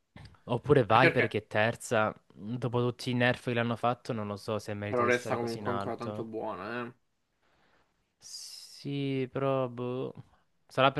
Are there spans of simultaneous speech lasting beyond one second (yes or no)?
yes